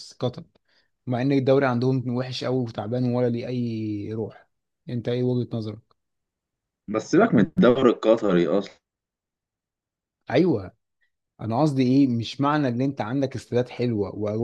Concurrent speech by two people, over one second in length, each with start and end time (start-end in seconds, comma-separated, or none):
none